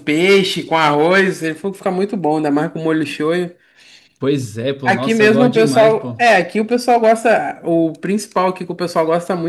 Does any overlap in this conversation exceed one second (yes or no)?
yes